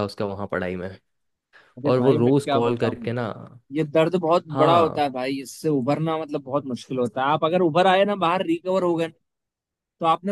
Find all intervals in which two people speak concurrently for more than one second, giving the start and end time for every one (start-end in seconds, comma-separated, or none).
1.9-3.1